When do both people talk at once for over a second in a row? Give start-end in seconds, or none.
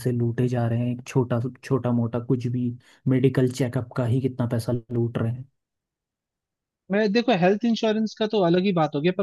none